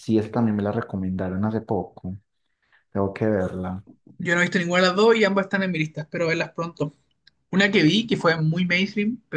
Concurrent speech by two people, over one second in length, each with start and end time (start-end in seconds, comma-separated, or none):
none